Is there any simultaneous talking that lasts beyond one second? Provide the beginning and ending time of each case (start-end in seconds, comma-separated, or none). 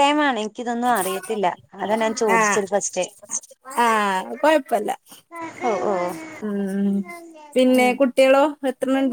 none